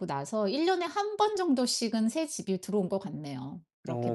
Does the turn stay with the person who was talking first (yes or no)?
no